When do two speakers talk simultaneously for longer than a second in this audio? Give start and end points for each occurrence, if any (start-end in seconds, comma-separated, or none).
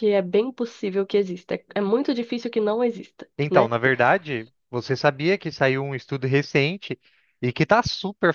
none